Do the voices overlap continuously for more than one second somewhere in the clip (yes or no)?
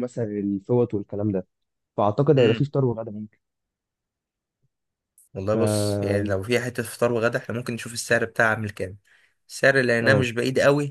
no